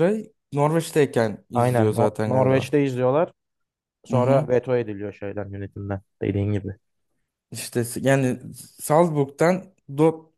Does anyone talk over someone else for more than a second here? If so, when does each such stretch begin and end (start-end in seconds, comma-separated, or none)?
1.5-2.7